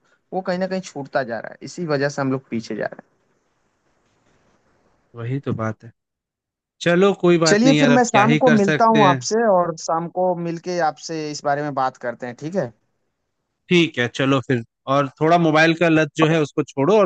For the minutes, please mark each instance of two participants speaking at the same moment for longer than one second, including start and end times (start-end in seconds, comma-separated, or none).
7.5-9.2